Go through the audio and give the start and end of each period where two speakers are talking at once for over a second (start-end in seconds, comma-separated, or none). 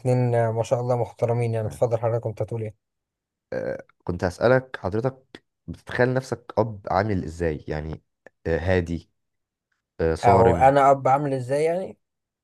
none